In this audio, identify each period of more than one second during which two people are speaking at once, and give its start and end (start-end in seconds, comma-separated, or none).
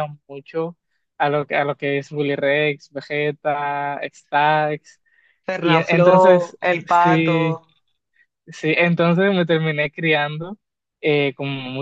5.6-7.4